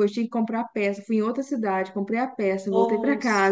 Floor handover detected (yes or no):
no